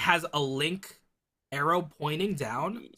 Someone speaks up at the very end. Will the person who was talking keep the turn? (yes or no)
yes